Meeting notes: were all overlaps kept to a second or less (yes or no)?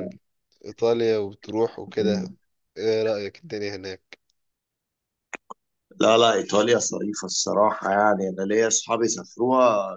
yes